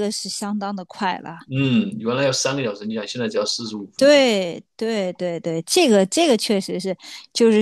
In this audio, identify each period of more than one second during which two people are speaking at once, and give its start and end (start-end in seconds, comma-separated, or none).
none